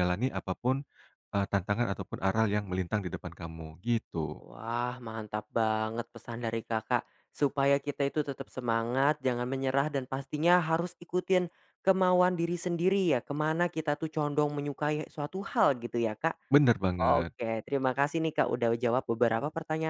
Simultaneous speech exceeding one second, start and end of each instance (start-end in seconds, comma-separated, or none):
none